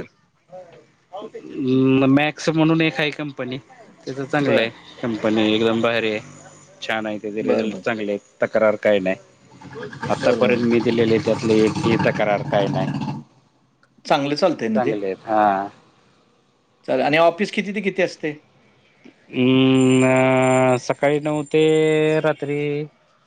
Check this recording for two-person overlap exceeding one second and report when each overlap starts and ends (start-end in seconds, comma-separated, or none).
none